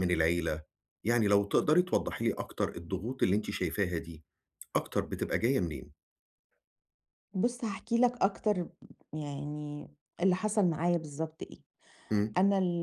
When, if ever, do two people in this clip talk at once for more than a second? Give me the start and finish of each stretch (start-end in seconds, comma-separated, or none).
none